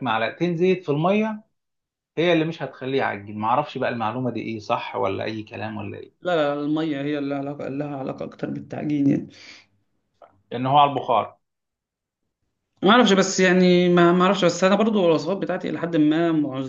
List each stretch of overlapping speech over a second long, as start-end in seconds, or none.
none